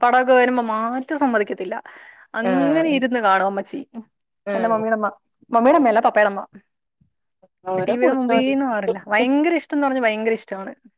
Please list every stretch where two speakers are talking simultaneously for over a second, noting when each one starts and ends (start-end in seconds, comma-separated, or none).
7.9-9.4